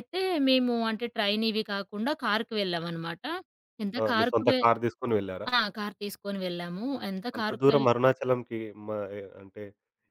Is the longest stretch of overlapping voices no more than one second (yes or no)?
yes